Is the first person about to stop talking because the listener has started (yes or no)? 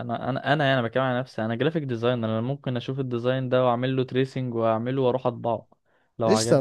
yes